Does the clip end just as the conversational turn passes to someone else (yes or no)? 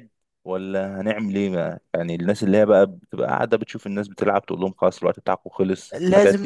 yes